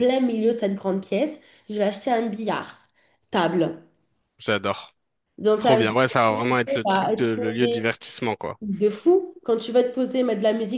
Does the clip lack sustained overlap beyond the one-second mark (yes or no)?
no